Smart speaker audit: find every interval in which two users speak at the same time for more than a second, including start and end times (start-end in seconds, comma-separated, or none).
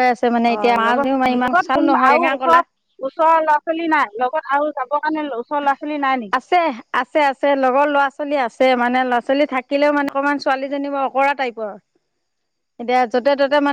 0.5-2.6